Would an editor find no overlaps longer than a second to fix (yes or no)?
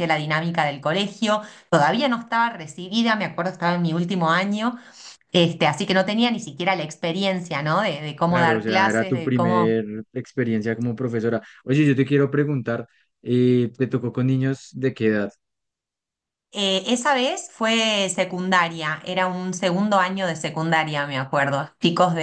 no